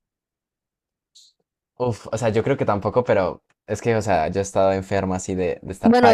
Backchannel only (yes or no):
no